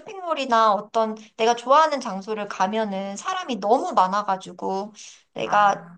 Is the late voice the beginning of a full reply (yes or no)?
no